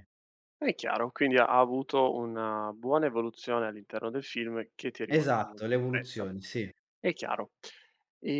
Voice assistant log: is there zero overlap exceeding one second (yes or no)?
no